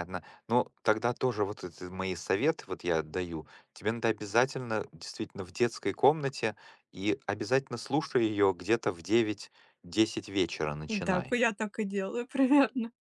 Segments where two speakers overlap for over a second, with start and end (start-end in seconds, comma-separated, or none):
none